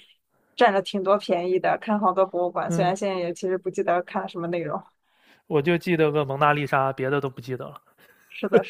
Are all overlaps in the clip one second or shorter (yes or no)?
yes